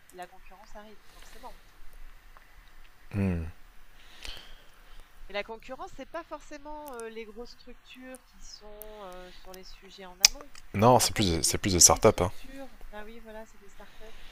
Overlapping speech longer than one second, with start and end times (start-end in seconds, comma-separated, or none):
11.0-12.3